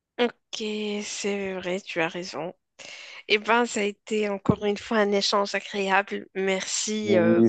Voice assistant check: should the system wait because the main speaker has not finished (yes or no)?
no